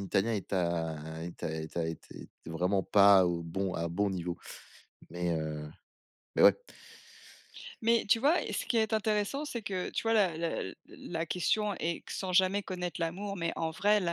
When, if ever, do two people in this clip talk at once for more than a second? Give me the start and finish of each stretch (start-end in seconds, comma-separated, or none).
none